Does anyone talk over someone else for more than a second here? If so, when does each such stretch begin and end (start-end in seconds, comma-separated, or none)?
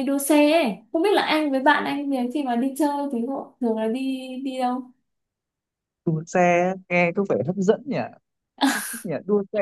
none